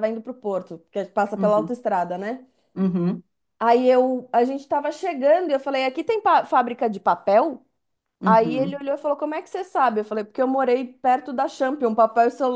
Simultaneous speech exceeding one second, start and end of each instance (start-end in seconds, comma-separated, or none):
none